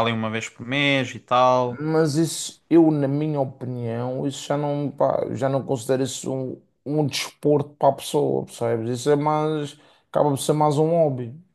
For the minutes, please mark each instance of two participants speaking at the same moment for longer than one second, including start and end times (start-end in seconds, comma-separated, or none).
none